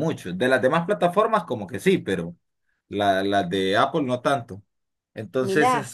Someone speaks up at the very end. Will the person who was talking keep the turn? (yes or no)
yes